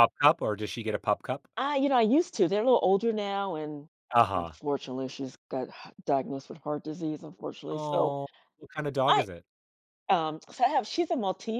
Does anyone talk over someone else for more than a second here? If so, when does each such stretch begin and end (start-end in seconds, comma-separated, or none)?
none